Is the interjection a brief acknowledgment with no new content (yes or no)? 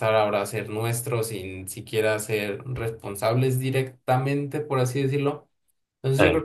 yes